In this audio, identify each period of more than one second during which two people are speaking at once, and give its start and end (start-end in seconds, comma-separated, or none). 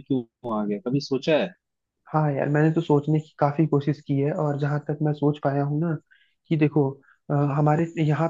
none